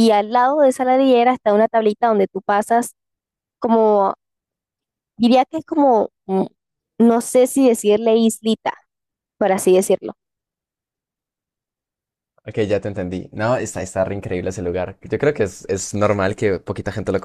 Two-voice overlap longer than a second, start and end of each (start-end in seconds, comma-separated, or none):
none